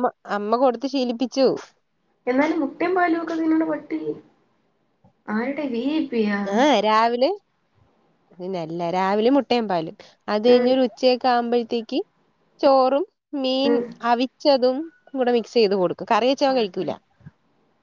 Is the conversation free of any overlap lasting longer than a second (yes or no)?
yes